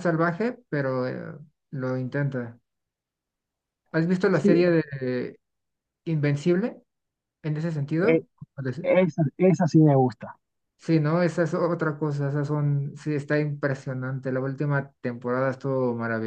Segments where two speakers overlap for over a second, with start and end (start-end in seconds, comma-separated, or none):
none